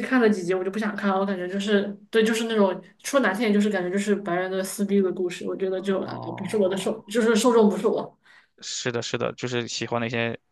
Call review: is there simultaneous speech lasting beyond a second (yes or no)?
yes